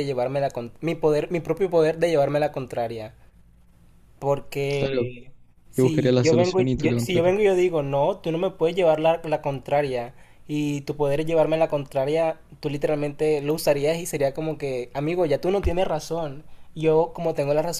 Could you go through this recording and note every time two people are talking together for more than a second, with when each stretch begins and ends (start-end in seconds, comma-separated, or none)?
5.8-7.3